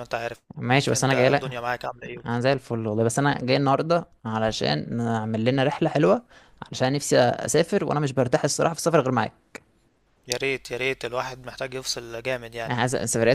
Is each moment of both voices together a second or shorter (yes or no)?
yes